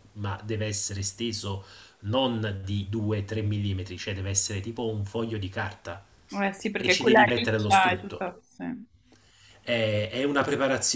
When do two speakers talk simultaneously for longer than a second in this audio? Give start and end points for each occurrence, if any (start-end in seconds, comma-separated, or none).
6.8-8.2